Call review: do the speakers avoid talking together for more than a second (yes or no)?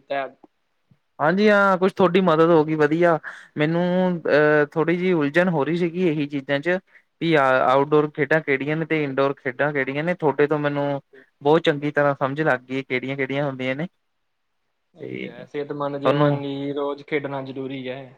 yes